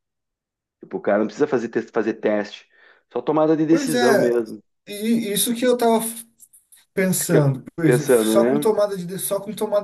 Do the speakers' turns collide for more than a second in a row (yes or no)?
yes